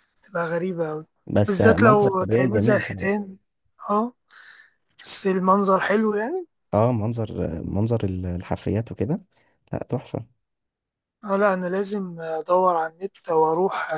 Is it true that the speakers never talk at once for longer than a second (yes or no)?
no